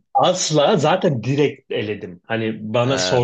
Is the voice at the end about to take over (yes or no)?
no